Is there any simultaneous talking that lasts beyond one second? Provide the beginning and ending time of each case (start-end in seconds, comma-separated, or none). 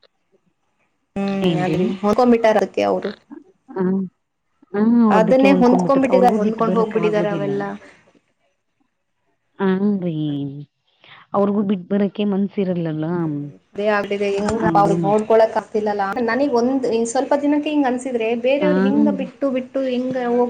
6.2-7.5